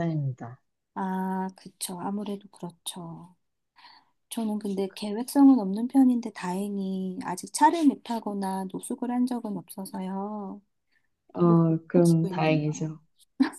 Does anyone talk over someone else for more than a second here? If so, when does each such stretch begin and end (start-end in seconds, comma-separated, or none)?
11.3-12.9